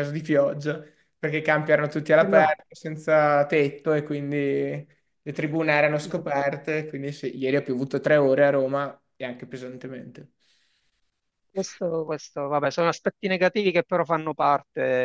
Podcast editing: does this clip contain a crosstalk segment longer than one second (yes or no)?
no